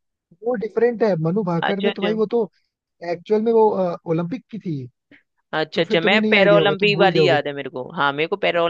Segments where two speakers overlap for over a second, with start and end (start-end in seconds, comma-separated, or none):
5.7-7.4